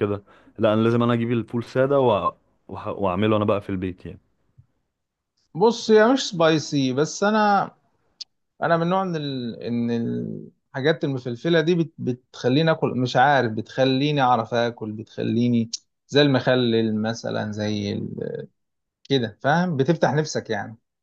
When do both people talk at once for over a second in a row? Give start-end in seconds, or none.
none